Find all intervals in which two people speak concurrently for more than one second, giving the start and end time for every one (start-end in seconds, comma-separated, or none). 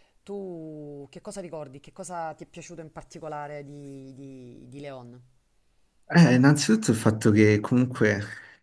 none